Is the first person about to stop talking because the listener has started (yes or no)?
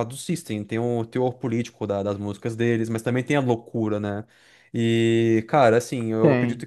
no